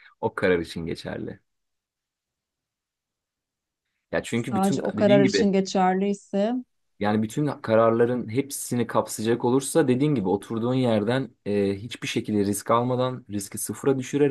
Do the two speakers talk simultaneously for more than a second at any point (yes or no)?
yes